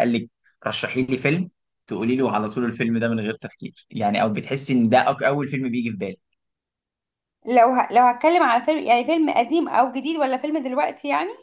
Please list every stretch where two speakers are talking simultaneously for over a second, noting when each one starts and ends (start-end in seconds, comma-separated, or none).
none